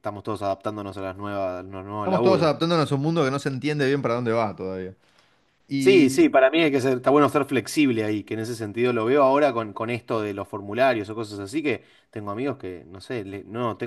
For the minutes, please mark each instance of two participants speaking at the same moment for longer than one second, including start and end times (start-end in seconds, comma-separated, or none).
none